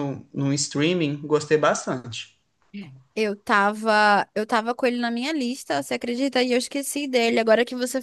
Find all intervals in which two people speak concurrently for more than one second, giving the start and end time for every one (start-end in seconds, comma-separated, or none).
none